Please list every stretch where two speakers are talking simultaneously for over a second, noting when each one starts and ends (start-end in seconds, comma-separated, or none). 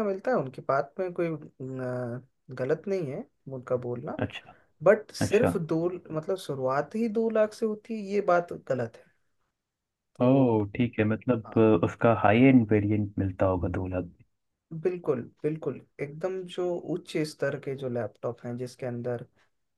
none